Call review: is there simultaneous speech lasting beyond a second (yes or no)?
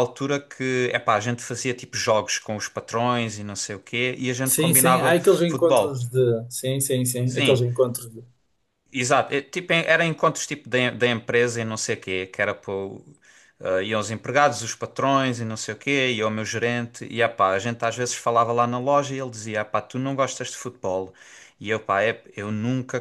yes